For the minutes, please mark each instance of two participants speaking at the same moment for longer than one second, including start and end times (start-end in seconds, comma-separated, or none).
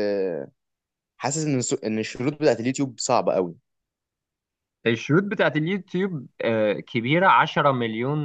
none